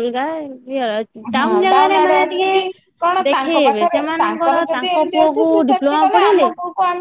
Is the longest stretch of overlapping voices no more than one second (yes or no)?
no